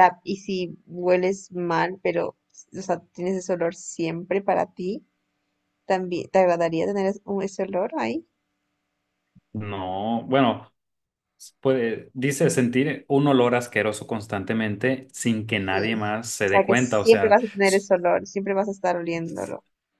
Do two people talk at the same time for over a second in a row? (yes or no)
yes